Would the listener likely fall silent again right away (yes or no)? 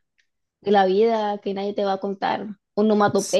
no